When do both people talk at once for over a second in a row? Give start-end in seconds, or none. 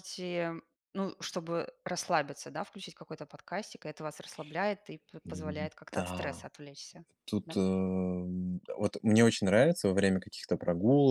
5.2-6.5